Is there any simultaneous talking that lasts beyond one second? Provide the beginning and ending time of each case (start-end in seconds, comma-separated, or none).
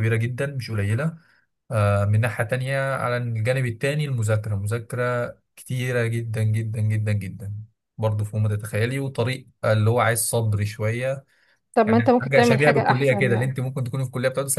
11.9-13.5